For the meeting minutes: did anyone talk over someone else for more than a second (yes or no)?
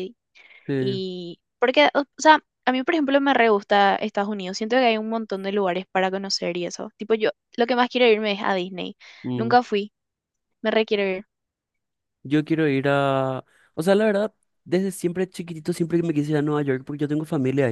no